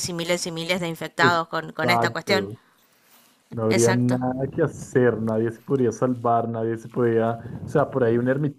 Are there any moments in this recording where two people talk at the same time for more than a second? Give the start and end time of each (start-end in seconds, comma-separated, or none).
1.2-2.5